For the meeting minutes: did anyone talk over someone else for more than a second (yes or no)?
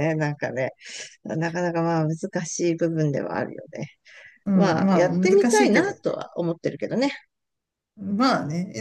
yes